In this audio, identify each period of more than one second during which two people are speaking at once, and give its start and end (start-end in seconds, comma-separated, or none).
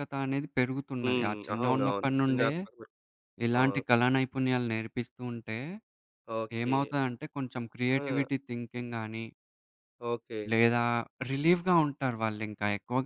1.0-2.5